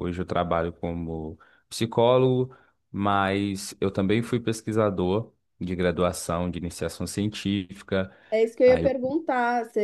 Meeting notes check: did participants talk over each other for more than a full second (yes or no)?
no